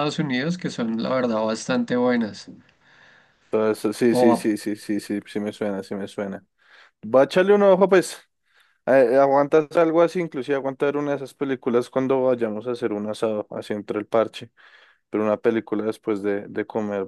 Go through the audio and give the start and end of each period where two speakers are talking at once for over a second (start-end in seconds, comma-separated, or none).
none